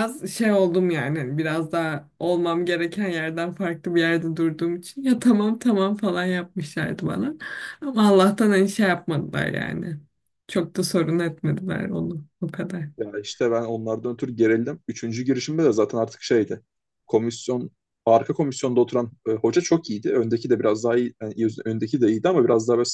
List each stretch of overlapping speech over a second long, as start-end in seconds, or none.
none